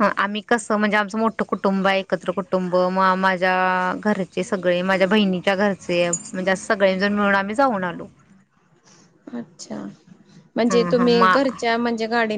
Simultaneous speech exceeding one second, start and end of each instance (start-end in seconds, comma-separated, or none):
none